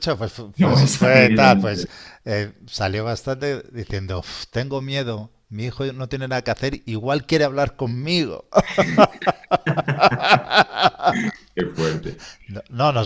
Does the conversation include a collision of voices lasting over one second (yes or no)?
yes